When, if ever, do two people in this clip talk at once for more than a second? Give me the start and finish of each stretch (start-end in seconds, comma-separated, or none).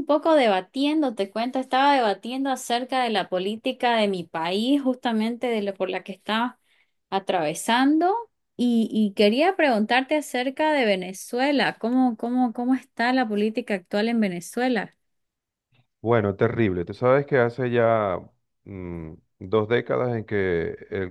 none